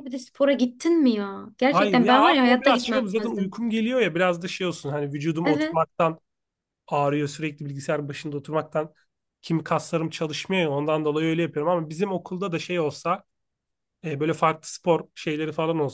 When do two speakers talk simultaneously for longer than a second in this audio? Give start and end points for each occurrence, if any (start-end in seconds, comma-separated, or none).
1.7-3.6